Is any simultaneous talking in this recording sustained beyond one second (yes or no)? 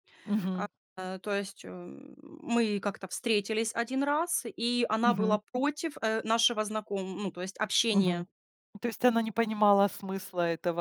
no